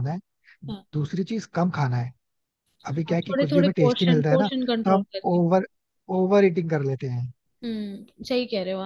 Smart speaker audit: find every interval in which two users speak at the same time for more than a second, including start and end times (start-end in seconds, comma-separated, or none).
3.1-5.4